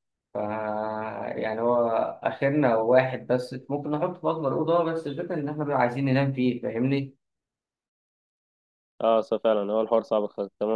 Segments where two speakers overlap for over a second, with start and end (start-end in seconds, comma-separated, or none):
none